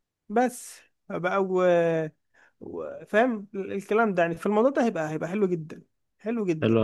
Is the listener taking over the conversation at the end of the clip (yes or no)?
yes